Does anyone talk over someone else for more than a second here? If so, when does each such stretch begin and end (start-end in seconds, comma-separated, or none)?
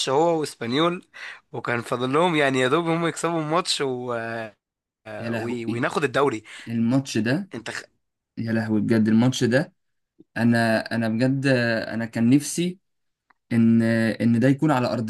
none